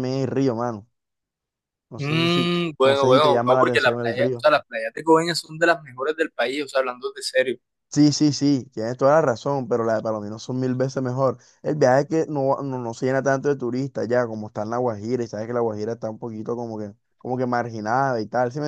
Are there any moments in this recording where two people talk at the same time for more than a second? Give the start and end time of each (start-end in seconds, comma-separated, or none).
2.0-4.5